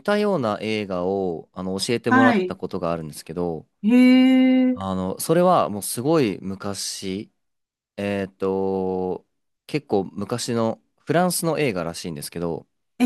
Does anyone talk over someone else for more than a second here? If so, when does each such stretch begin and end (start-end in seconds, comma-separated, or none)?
none